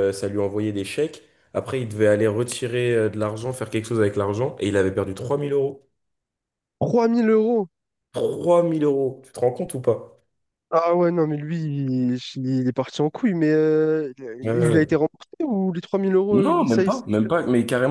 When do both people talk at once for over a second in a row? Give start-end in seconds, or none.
none